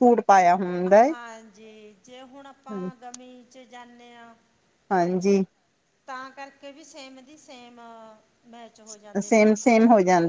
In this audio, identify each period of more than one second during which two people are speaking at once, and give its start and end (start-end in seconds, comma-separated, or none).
none